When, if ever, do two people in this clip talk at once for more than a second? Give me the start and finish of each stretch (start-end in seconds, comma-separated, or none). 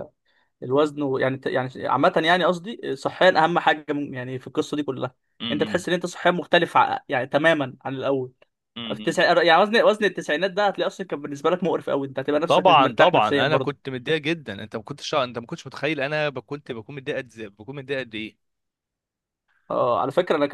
12.5-13.8